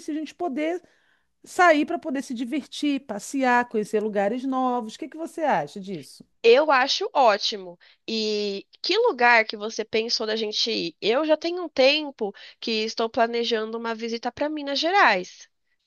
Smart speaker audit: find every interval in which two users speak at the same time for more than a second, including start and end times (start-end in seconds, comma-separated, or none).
none